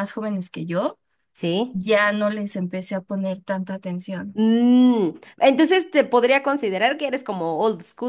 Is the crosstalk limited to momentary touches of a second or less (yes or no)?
yes